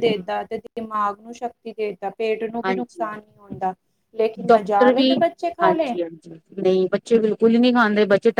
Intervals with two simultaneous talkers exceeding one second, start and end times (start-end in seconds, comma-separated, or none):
none